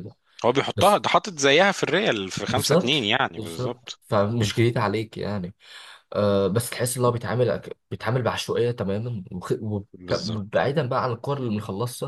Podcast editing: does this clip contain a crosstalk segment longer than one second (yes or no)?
yes